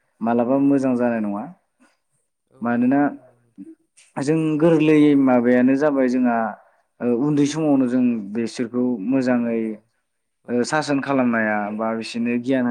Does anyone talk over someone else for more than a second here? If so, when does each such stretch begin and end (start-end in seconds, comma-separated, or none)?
none